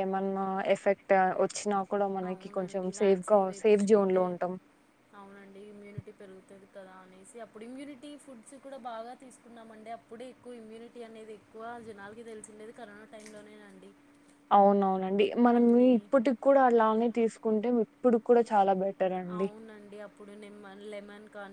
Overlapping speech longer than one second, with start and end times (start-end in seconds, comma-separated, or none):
2.3-4.2